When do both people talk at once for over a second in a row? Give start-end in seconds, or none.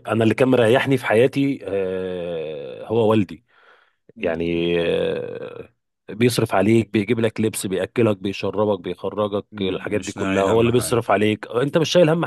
9.5-11.0